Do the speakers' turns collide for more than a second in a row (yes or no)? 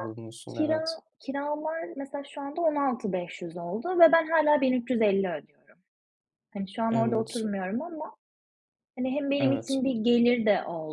no